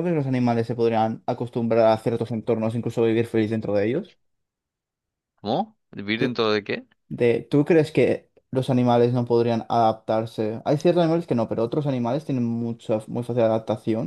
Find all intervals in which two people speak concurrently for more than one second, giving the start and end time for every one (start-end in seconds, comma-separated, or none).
none